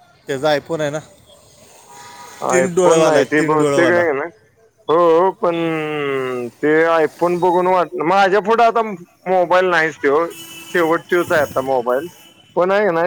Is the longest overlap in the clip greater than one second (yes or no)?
yes